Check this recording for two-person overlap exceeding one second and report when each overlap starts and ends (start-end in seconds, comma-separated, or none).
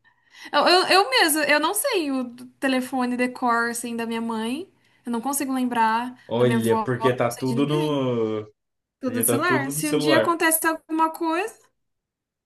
6.3-8.0, 9.0-10.4